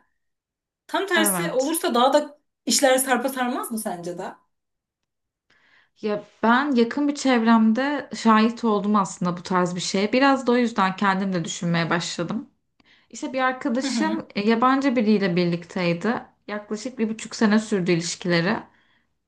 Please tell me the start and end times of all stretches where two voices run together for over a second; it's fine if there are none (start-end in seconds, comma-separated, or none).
none